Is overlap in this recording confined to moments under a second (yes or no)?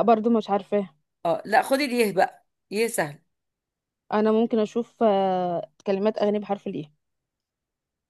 yes